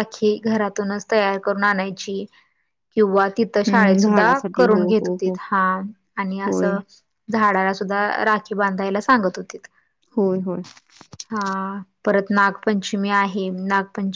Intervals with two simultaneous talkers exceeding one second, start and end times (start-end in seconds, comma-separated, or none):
3.7-5.3